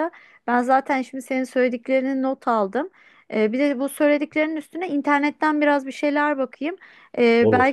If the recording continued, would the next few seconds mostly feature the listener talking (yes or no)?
no